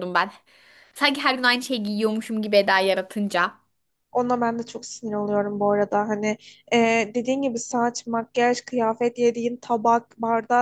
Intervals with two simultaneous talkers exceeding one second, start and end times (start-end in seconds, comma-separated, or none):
none